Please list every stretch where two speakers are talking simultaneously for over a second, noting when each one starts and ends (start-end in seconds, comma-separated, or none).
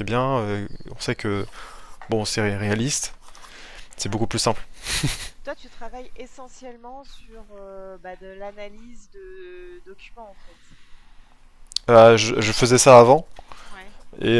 none